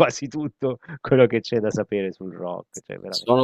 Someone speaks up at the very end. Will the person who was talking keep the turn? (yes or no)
no